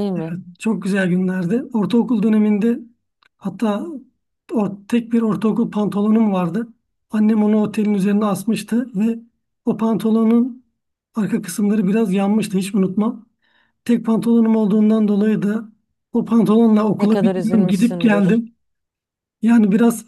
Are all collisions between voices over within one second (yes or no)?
no